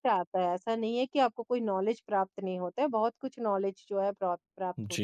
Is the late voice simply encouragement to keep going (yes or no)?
no